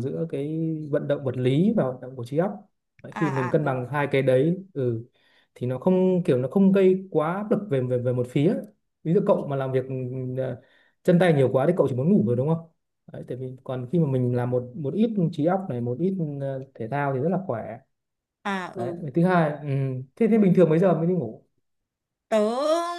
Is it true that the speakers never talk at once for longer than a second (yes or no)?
yes